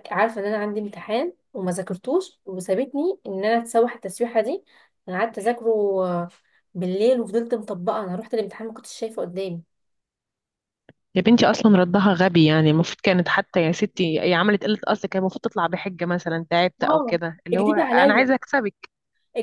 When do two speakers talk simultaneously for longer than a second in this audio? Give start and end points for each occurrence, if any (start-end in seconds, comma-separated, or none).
16.8-18.3